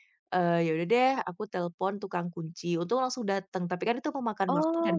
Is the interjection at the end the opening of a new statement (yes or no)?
no